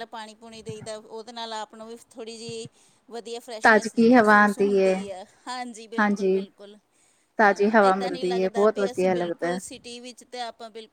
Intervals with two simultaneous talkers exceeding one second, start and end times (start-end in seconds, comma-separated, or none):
3.6-4.9, 7.4-9.6